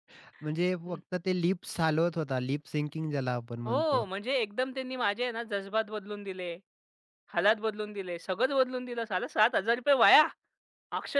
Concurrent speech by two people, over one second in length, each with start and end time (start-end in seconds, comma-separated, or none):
none